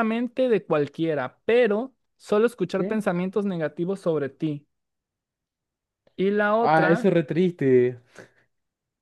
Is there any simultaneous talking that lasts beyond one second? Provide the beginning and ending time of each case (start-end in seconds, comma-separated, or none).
none